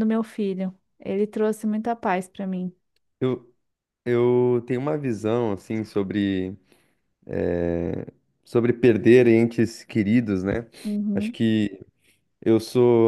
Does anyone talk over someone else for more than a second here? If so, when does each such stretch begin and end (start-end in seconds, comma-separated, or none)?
none